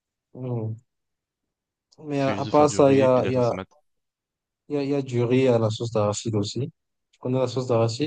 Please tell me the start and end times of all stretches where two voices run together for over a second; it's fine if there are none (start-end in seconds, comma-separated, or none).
2.2-3.5